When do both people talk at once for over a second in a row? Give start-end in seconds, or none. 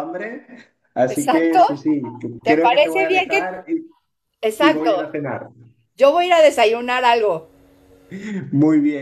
2.4-3.6